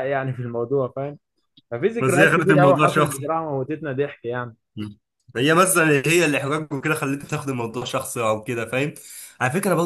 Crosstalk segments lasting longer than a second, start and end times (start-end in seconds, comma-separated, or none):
2.0-3.3